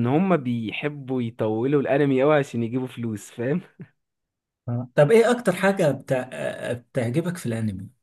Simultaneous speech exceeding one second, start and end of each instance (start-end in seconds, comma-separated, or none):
none